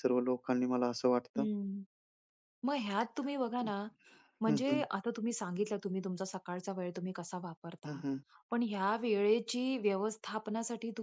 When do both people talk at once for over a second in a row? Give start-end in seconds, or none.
none